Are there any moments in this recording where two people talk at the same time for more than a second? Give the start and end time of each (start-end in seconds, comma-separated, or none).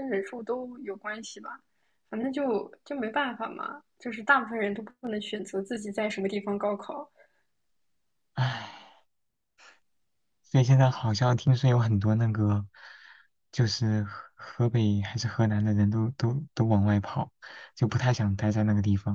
none